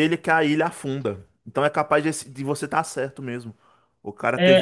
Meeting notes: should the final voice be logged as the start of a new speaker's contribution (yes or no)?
yes